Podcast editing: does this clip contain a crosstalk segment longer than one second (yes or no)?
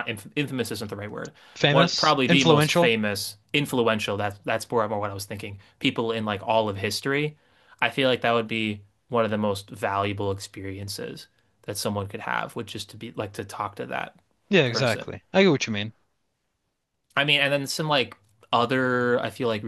yes